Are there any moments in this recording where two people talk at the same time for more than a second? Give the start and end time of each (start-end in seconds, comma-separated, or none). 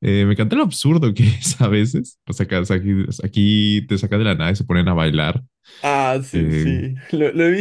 none